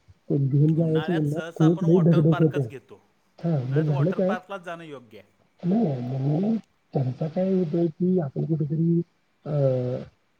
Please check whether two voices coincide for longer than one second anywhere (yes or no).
yes